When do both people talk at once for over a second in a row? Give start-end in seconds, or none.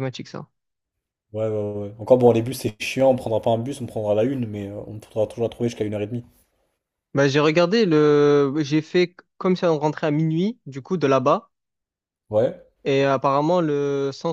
none